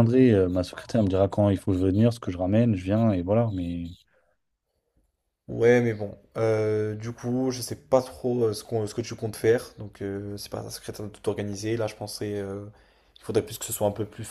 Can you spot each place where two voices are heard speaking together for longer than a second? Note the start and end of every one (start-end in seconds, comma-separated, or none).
none